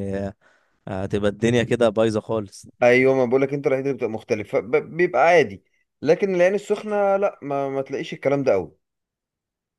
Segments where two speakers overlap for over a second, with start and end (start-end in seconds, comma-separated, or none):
none